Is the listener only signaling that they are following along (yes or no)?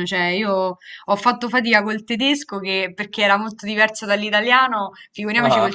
yes